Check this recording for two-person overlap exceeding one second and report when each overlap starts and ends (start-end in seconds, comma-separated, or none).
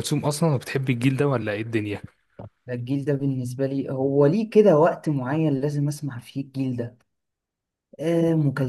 none